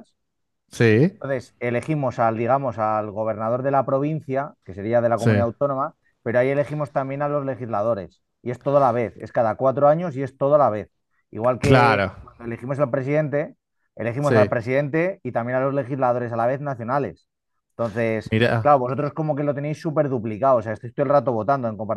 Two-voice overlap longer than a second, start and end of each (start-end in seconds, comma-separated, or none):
none